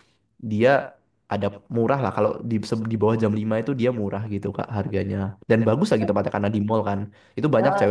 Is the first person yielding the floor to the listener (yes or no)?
no